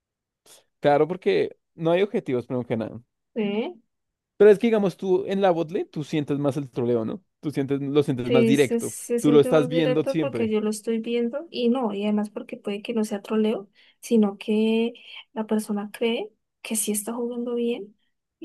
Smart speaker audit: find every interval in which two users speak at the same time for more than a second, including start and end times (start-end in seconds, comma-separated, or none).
8.2-10.5